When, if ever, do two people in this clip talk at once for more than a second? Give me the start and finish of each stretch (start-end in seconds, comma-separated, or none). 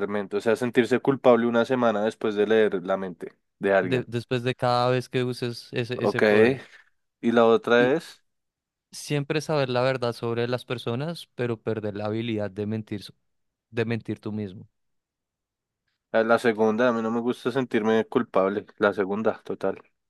none